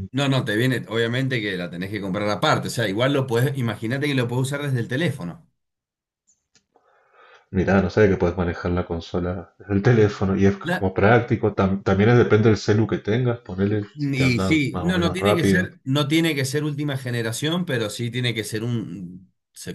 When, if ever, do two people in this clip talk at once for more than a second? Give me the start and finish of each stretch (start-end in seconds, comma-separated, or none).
13.9-15.7